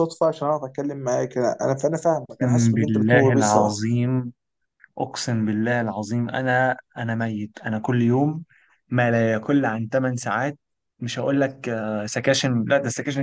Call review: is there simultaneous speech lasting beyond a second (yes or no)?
yes